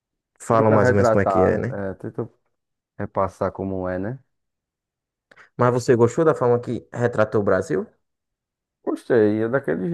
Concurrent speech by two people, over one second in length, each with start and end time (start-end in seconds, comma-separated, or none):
0.5-1.8